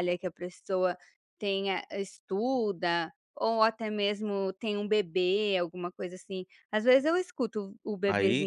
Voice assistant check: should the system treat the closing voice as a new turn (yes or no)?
yes